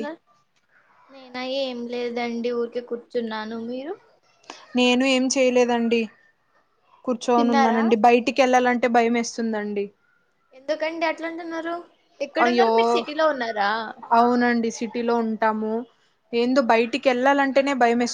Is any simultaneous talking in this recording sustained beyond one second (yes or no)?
no